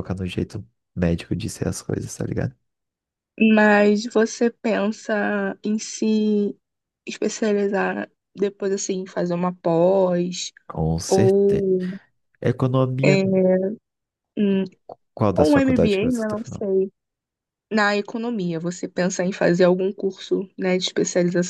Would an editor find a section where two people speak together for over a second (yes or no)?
yes